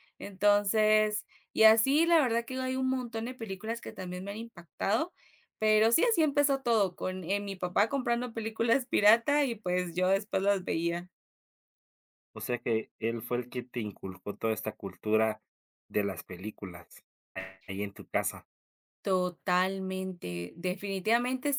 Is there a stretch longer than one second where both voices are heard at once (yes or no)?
no